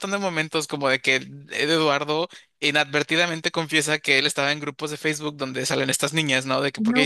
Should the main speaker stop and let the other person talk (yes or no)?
no